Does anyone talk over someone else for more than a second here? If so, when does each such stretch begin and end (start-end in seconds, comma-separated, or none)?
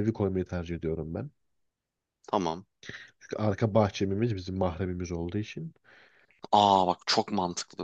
none